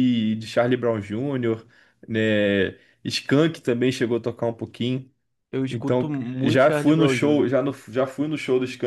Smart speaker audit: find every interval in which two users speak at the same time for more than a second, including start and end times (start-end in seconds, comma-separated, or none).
5.7-7.5